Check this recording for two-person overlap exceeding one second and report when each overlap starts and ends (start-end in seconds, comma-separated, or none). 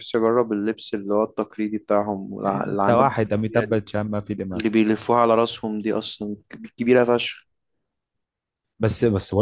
2.5-3.8